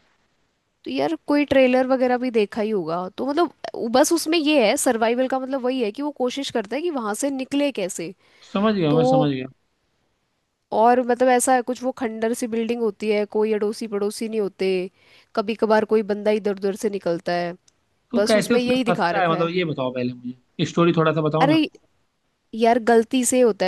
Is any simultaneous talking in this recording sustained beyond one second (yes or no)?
yes